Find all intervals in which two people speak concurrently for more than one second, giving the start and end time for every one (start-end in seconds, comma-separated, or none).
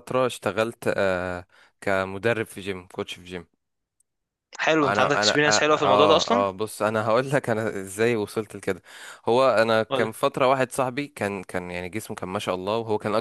4.8-6.5